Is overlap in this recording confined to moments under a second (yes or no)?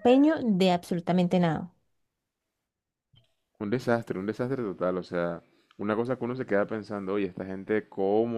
yes